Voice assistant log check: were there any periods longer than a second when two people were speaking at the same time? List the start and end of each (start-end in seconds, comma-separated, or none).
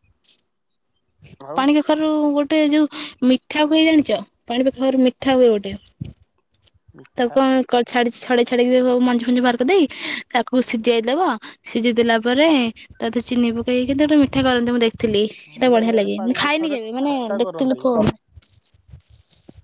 15.6-17.8